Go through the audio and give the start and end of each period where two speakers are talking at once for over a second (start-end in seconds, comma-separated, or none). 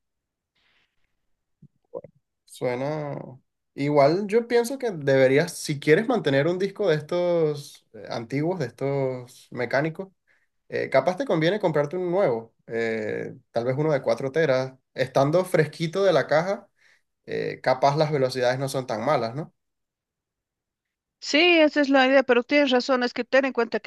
none